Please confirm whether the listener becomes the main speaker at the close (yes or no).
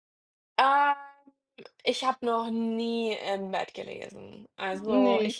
no